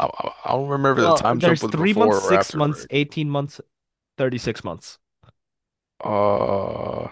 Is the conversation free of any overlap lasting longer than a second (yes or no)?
no